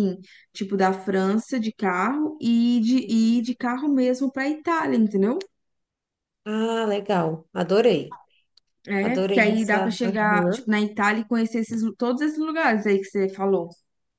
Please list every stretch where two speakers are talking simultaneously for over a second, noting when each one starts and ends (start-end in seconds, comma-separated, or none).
9.0-10.7